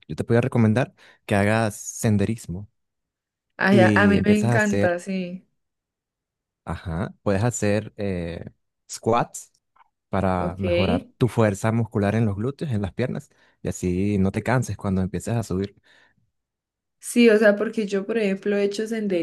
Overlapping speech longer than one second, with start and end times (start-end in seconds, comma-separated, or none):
3.7-5.0